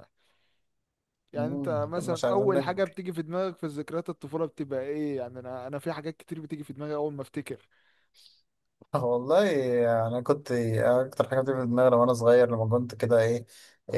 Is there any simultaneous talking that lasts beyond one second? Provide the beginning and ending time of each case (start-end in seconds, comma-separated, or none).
1.4-3.0